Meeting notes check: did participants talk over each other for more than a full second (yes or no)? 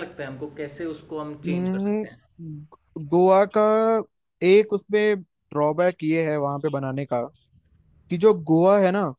no